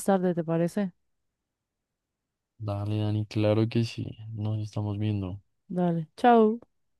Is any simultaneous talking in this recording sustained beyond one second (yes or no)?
no